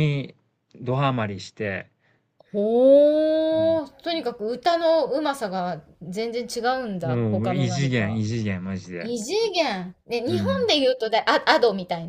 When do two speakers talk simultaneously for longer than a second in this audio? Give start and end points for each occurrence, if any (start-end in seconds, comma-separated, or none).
7.0-8.2